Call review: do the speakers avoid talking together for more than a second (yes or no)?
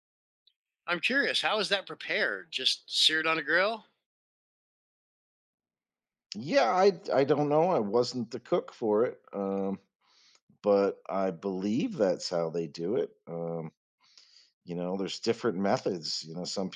yes